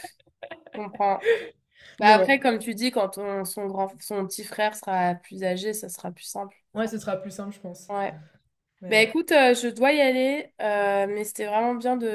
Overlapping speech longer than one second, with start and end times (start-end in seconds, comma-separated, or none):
none